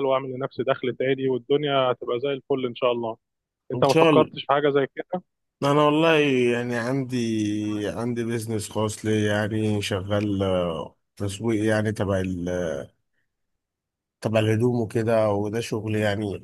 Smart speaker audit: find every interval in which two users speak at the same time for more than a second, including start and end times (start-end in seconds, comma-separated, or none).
none